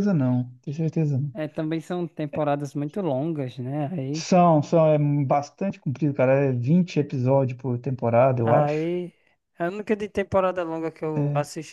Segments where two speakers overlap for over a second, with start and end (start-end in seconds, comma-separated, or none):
none